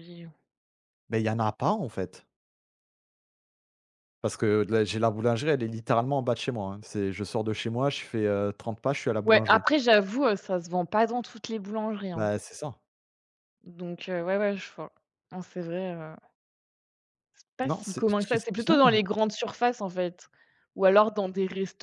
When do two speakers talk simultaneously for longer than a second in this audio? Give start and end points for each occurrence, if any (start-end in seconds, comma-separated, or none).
none